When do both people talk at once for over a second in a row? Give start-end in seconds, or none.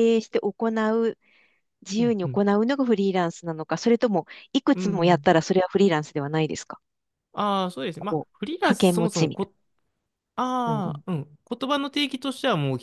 8.0-9.5